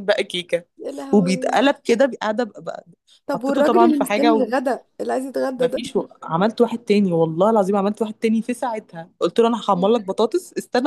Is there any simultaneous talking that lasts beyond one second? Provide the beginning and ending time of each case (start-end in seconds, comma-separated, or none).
3.3-4.5